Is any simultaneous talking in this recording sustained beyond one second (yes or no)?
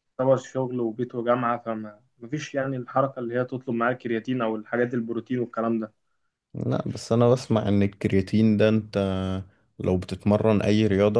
no